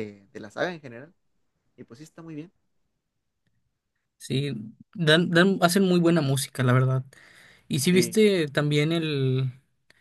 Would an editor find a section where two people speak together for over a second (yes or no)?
no